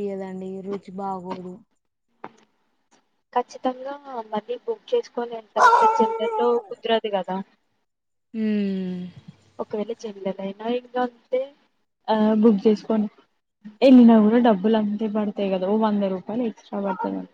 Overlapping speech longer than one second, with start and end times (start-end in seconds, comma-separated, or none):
none